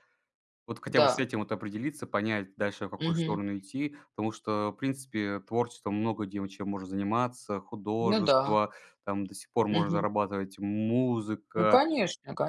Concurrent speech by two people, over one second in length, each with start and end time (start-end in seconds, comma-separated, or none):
none